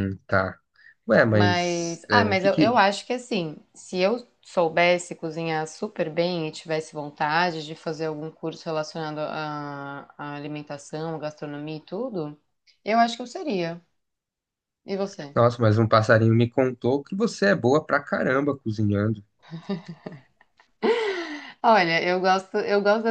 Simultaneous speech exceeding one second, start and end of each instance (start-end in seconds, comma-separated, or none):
1.3-2.8